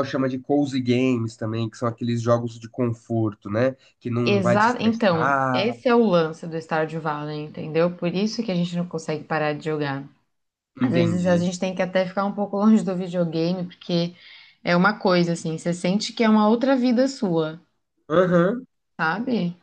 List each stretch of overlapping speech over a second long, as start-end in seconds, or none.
4.2-5.8